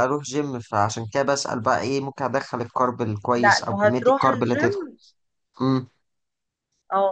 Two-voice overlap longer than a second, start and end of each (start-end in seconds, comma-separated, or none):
3.4-4.9